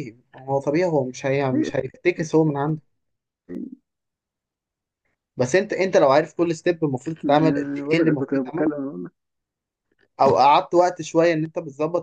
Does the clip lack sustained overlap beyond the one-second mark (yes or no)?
no